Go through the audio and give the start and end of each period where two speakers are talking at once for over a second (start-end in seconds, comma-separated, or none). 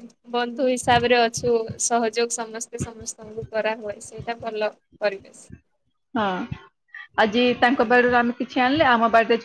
none